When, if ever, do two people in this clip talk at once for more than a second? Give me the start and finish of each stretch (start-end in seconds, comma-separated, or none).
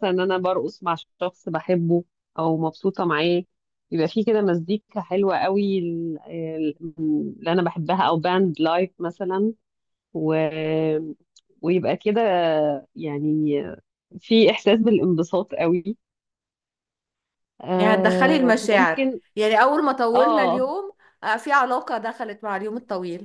17.8-19.2